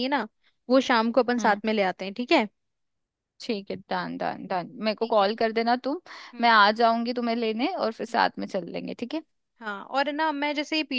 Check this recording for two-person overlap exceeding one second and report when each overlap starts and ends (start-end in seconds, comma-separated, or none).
none